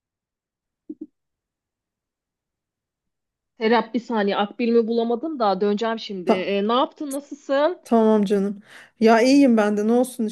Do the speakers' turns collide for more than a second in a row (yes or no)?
no